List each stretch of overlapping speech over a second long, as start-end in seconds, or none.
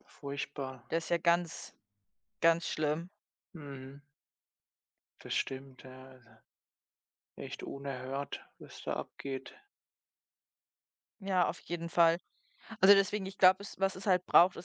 none